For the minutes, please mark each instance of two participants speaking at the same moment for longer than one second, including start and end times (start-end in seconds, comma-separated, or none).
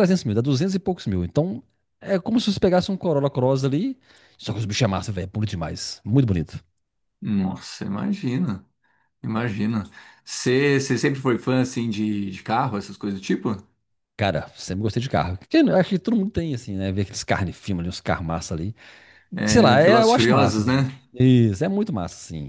19.4-20.9